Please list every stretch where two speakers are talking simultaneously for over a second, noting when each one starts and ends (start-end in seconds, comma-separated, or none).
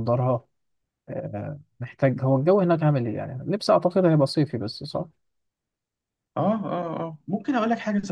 none